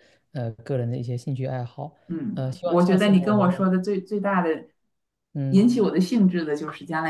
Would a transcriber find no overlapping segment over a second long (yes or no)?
no